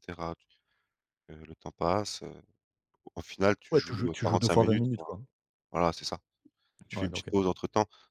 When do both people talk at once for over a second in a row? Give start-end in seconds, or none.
3.7-5.1